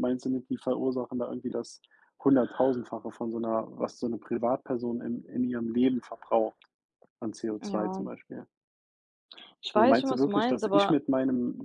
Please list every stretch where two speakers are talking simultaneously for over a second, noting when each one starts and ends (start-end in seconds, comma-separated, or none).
9.7-11.0